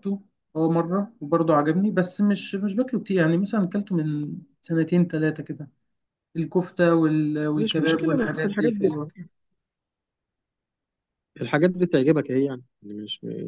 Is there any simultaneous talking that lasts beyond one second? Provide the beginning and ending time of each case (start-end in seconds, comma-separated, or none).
7.6-8.9